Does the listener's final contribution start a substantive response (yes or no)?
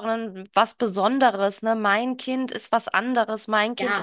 no